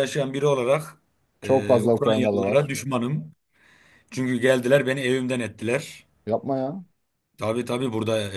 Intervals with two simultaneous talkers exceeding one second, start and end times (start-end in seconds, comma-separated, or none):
1.4-2.7